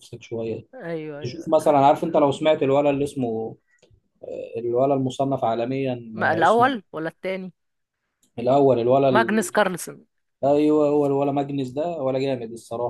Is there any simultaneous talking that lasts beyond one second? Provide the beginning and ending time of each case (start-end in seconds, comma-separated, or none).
none